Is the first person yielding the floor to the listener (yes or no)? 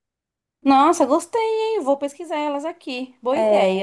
yes